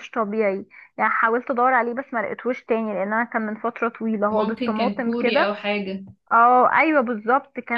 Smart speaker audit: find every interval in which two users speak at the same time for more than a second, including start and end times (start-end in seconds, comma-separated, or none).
4.3-5.6